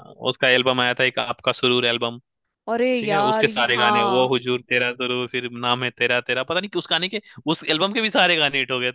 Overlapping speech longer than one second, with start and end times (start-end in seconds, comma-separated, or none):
3.0-4.3